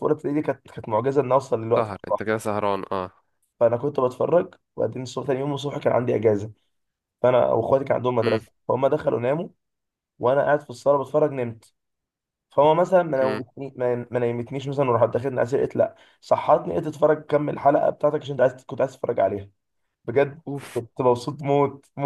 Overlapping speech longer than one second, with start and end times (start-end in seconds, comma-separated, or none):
none